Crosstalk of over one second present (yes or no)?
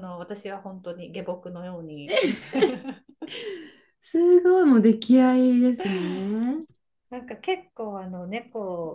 no